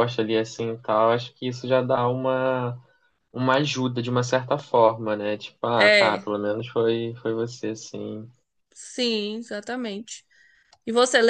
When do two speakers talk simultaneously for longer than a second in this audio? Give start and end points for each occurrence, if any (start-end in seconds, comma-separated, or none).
none